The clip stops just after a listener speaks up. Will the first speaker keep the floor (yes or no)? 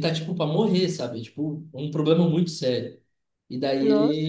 yes